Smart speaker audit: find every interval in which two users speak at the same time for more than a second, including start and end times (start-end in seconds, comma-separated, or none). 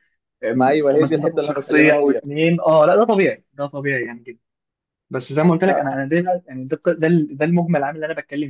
0.6-2.2